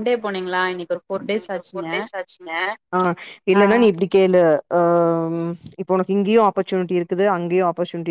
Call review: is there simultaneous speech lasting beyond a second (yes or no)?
no